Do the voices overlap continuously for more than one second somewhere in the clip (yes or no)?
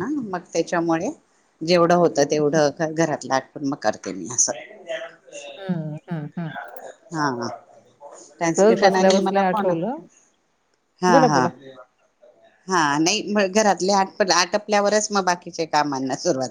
no